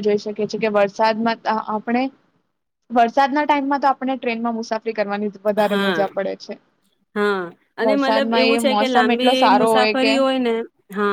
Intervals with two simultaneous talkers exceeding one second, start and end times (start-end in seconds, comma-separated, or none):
none